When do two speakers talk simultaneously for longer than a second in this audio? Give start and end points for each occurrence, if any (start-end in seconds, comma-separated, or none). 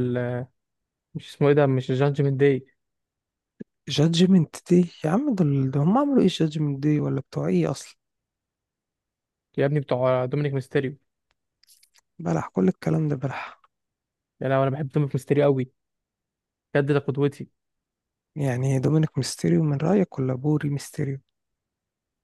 none